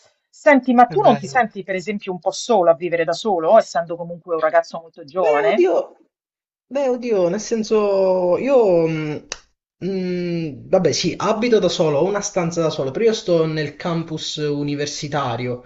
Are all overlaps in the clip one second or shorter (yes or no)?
yes